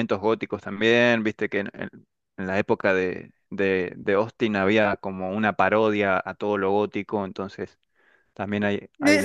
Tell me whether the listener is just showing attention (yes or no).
no